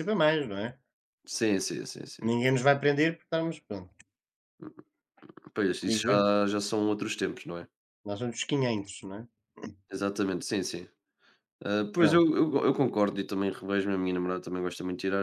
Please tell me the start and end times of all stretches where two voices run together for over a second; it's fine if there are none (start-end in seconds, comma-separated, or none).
none